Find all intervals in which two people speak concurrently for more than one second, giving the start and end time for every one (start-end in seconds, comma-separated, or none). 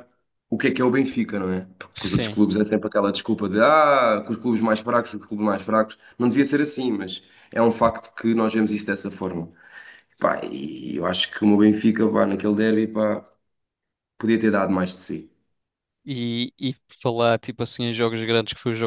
none